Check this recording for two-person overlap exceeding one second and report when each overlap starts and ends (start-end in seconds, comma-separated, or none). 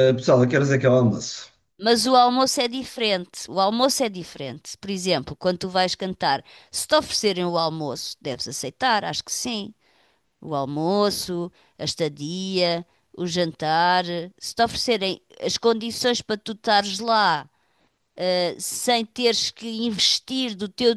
none